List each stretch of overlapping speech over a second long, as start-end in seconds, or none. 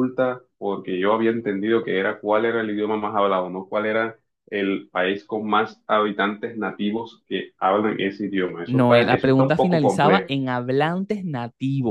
8.6-10.3